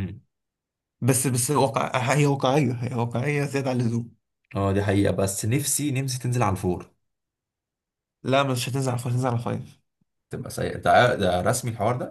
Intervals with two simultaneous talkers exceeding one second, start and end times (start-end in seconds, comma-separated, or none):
none